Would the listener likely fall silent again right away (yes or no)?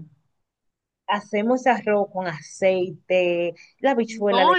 no